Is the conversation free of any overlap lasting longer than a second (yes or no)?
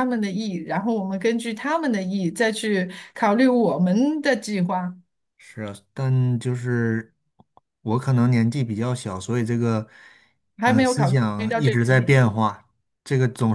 no